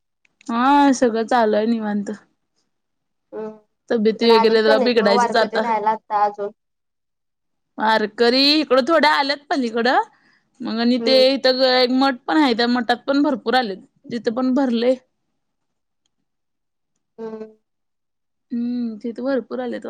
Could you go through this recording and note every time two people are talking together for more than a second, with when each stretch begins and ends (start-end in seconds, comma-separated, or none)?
3.9-5.6